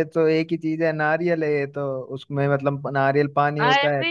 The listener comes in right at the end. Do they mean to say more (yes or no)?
no